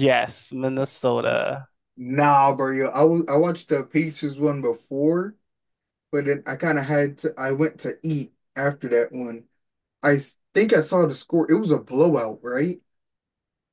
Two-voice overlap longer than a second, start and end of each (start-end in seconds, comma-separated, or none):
none